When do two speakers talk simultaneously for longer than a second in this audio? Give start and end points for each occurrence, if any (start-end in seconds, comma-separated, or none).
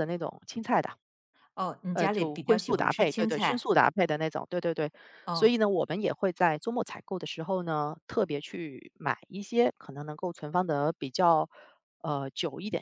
1.9-3.7